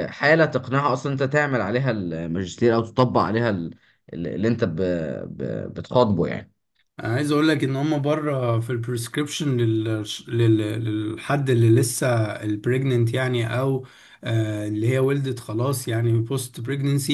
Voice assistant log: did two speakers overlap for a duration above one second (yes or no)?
no